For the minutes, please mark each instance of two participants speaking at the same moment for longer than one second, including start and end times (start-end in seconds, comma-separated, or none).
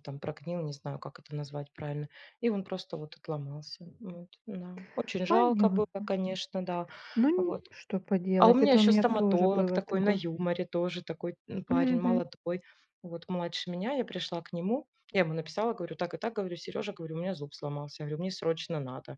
8.4-10.2